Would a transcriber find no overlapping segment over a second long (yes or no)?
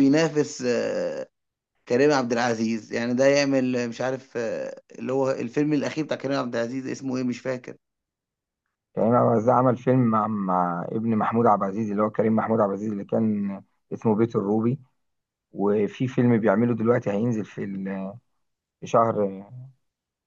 yes